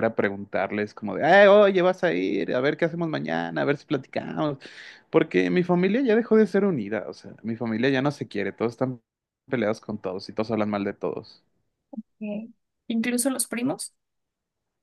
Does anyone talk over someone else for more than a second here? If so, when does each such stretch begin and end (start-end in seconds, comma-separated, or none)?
none